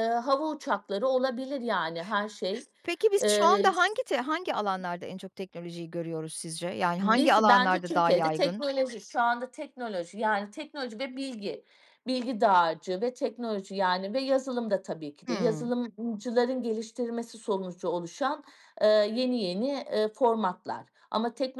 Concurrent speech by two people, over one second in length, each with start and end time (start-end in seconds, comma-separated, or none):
7.0-8.6